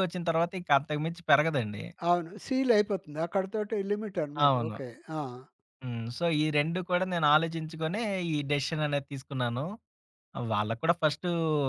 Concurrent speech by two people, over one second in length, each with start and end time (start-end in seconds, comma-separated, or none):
none